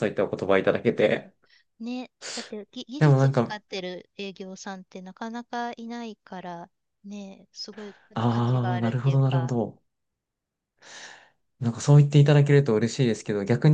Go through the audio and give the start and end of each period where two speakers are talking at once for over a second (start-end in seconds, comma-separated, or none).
8.1-9.5